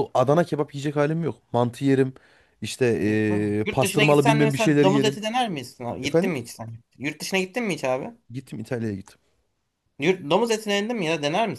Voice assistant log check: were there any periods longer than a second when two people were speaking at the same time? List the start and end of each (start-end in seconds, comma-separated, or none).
3.6-5.2